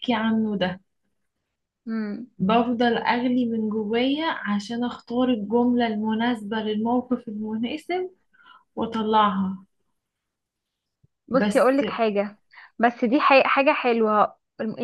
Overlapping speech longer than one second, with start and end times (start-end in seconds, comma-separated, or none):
none